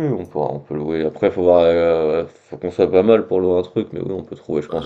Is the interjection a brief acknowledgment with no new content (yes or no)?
no